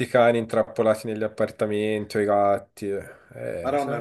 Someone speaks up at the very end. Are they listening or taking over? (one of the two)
taking over